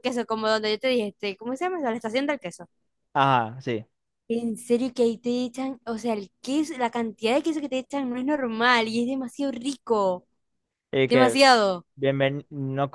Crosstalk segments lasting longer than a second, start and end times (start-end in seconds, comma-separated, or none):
none